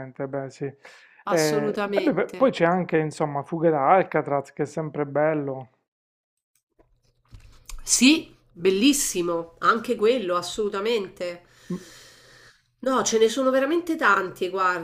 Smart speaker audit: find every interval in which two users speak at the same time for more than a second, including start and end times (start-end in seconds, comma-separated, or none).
none